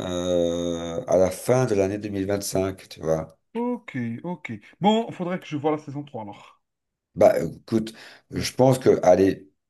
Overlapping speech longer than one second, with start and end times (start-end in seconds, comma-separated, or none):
none